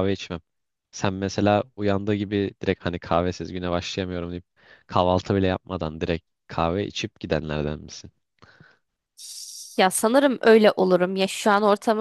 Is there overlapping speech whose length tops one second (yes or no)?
no